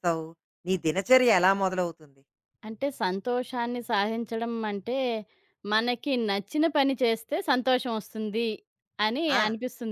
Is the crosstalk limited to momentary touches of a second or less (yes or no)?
yes